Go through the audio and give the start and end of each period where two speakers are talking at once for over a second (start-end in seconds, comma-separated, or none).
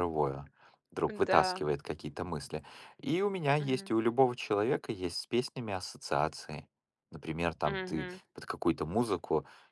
none